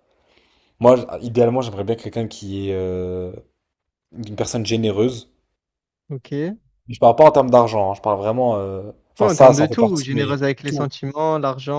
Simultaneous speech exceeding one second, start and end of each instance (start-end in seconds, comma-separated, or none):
9.2-10.9